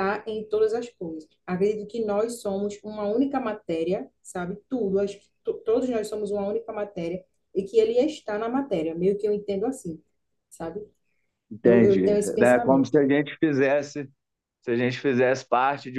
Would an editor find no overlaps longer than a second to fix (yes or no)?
no